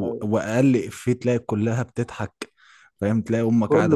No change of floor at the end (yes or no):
yes